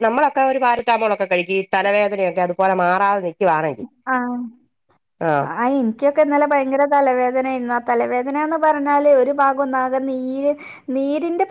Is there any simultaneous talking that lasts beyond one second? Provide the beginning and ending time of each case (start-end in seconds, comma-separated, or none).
none